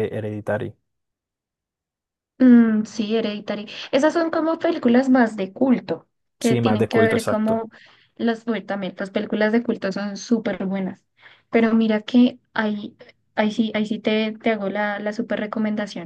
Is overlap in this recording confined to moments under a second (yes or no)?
no